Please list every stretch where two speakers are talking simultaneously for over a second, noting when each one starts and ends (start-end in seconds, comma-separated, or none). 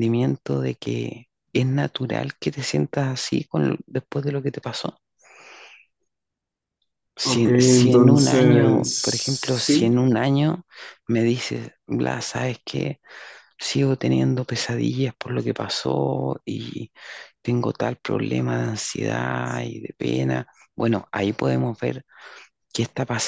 7.2-8.9